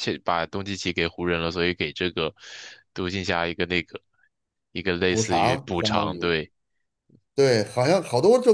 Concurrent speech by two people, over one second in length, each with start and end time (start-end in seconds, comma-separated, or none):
5.1-6.3